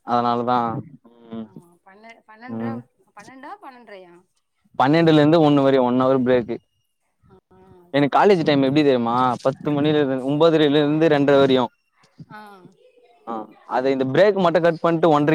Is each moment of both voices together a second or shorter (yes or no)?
yes